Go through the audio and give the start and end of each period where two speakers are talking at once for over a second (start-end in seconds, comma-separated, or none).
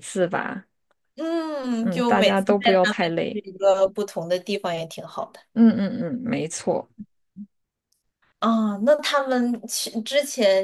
1.8-3.4